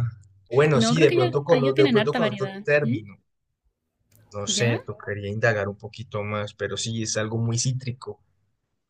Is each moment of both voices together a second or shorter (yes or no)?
no